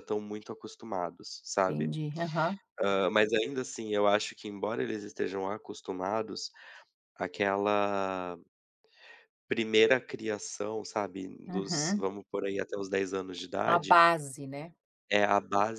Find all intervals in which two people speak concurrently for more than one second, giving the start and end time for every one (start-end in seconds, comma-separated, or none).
none